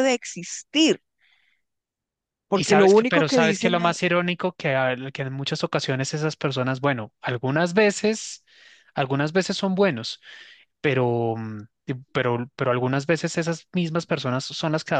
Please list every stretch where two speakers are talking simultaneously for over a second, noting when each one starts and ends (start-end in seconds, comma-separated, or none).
2.5-4.0